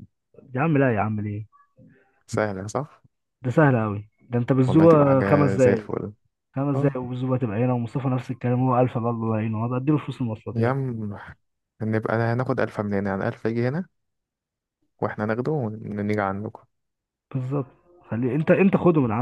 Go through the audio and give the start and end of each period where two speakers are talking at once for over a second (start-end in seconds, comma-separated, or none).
4.7-5.9